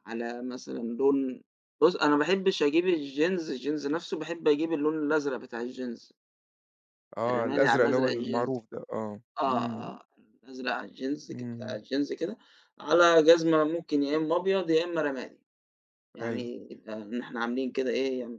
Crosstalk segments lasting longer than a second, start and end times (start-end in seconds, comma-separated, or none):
7.3-8.7